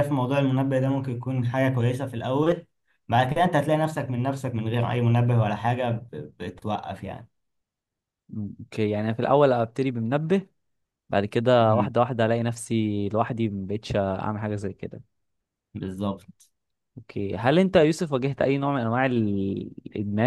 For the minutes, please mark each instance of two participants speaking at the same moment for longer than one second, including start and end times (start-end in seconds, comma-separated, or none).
none